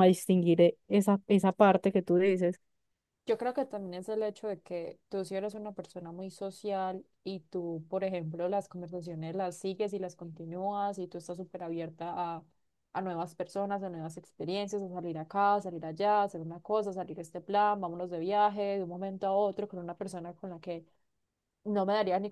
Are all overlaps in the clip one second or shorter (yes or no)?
yes